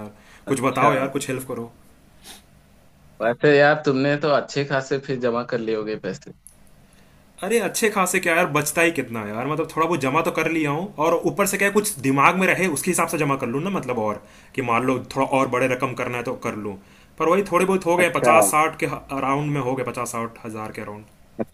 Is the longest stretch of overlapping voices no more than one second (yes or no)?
yes